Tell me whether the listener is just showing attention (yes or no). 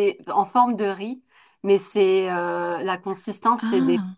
yes